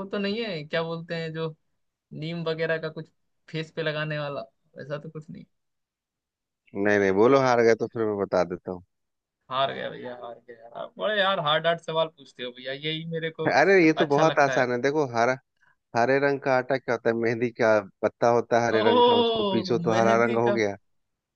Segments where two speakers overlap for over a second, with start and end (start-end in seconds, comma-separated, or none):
18.8-20.6